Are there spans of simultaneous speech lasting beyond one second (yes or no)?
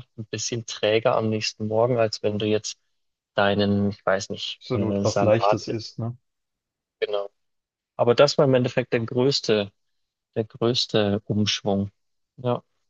yes